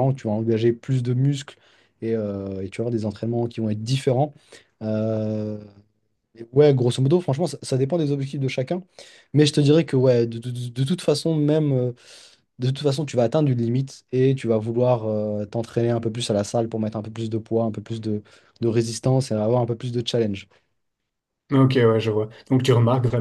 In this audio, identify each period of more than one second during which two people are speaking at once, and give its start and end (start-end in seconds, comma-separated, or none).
none